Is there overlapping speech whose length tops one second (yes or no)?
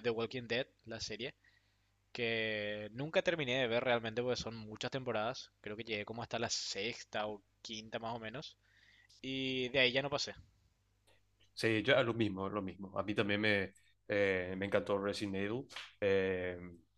no